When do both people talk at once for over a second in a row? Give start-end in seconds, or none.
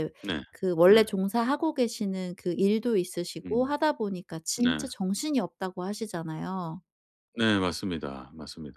none